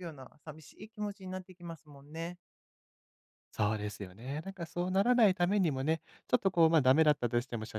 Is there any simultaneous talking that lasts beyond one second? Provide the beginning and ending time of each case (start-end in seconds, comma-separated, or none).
none